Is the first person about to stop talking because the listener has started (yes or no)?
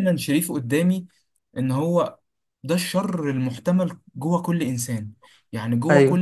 no